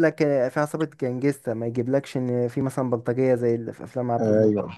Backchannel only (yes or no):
no